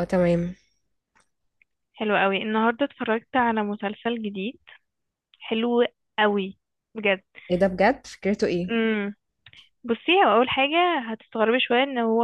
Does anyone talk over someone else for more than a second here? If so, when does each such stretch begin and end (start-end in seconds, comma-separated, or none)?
none